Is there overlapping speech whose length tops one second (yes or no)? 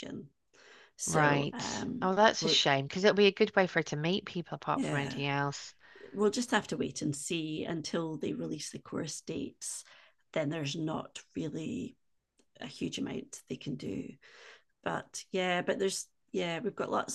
yes